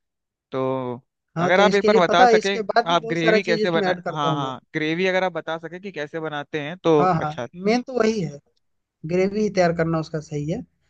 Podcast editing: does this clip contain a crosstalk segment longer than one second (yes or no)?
yes